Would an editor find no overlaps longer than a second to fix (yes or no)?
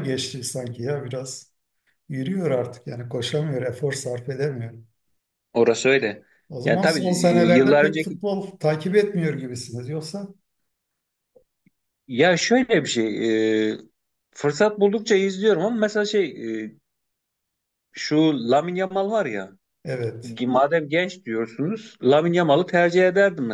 no